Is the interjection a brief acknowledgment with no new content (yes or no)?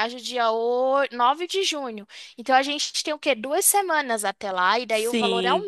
no